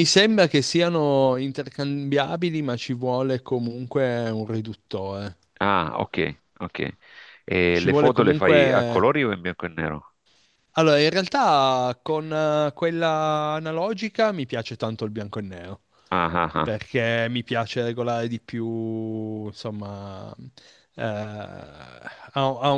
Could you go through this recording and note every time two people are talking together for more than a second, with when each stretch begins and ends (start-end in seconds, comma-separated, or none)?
7.7-9.1